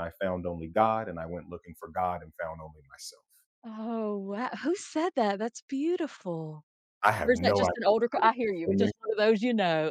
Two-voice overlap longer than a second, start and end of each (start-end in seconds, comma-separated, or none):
7.2-8.9